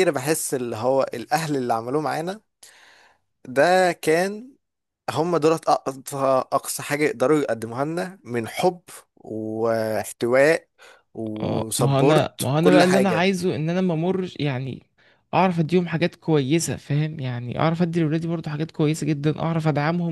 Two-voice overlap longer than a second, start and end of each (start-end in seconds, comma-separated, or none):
11.4-13.3